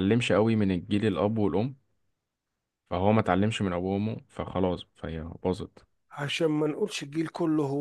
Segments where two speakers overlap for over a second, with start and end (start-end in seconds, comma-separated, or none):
none